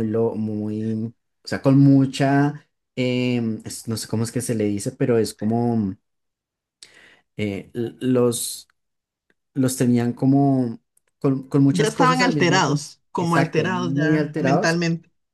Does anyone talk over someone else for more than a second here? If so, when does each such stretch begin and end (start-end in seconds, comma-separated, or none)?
11.7-14.8